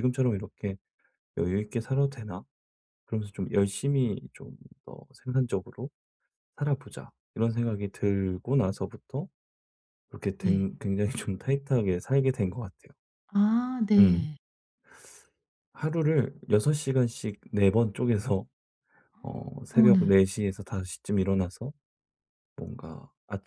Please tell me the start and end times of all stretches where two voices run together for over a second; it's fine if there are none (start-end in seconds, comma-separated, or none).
none